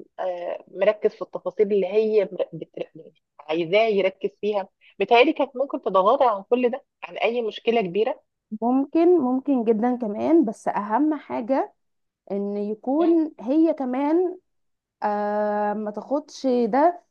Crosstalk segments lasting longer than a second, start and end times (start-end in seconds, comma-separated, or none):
none